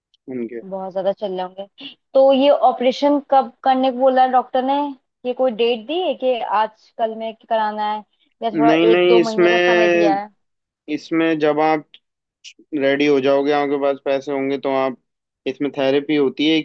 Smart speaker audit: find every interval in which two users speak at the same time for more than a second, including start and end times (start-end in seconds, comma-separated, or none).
8.7-10.2